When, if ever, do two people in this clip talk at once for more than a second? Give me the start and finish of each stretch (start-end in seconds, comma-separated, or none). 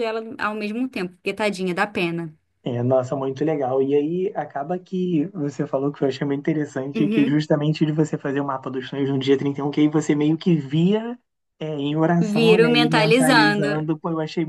12.2-13.8